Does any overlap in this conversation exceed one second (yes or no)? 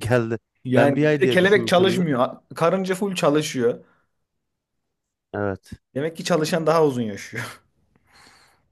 yes